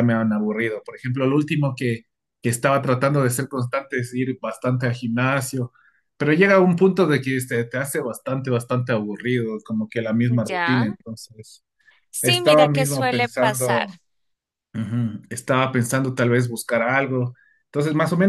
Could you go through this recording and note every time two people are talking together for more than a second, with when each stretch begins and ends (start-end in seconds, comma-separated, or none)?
12.2-13.9